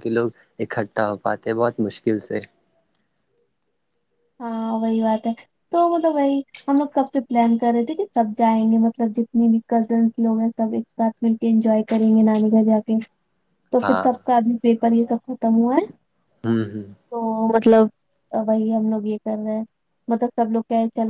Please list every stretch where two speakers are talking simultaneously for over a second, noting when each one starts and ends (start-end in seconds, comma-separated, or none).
none